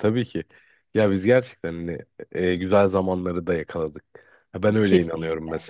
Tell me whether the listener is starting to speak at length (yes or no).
no